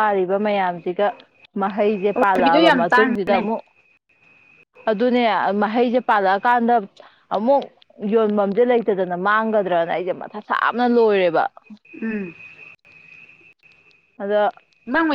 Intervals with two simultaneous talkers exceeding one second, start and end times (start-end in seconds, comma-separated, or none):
2.1-3.5